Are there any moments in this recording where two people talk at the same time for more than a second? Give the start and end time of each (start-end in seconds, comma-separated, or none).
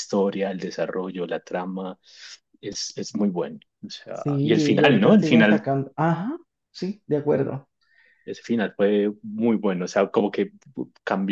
4.1-5.7